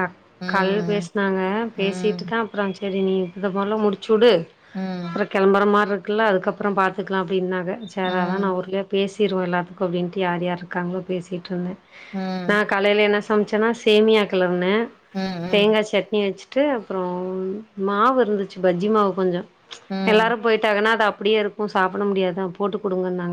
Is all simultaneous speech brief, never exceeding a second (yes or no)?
yes